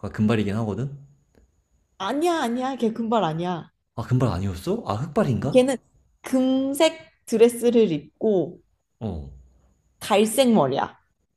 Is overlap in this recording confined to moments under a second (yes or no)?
yes